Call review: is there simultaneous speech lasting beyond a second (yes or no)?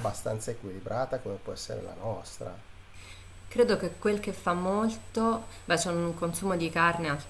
no